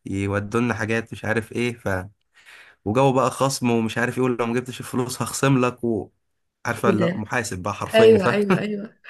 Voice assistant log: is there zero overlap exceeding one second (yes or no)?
yes